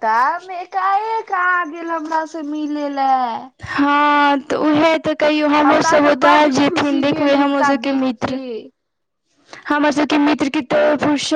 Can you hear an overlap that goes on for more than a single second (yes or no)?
yes